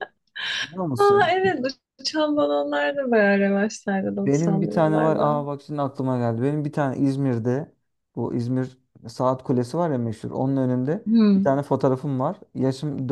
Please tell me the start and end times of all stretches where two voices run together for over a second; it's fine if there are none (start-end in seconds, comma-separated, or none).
4.1-5.4